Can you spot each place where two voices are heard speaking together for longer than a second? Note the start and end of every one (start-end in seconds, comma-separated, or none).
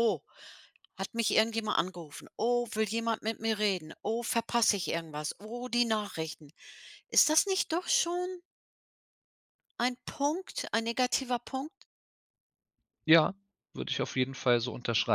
none